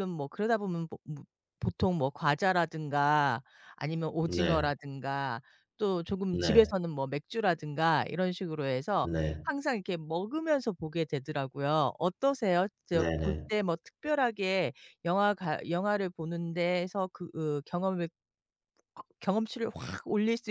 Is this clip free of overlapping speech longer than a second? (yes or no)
yes